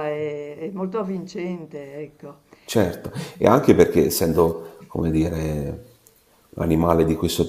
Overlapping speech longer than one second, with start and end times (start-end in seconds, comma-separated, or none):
none